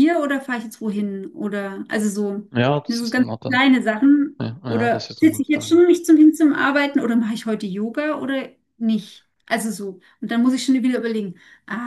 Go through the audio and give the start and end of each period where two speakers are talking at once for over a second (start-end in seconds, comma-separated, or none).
4.4-5.8